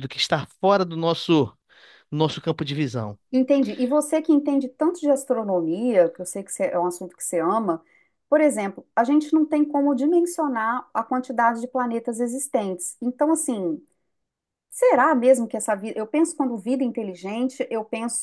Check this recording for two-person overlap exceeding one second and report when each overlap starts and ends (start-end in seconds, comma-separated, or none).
none